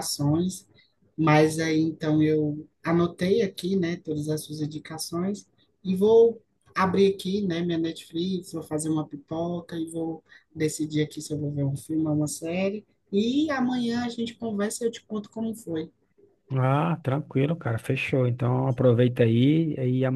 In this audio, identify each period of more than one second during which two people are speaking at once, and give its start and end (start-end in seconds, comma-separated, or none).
none